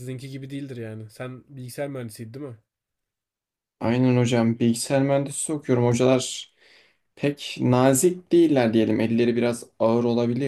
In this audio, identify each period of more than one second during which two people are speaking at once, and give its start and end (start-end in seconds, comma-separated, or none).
none